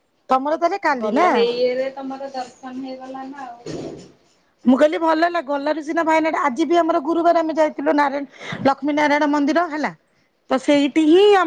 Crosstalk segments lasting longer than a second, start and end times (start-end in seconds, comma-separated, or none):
none